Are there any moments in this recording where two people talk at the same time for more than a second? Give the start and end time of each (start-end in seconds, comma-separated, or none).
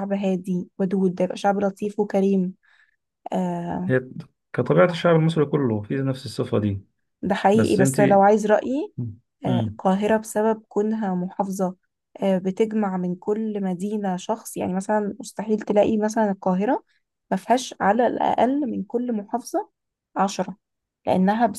none